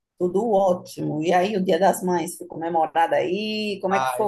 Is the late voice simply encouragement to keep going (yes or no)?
no